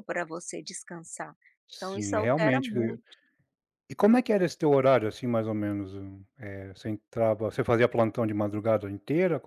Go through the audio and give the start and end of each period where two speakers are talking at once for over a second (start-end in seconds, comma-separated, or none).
1.8-3.0